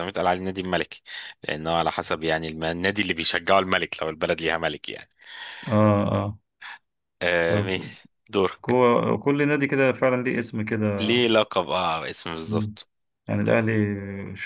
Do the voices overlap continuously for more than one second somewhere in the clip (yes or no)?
no